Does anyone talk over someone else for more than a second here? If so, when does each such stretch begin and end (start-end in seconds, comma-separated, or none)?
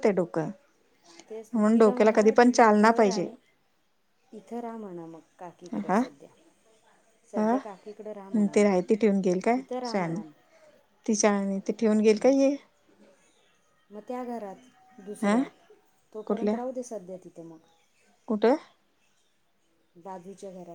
1.5-3.3